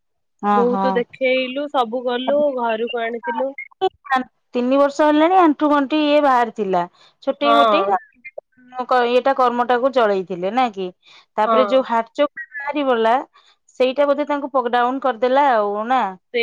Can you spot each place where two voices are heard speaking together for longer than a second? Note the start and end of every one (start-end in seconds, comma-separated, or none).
none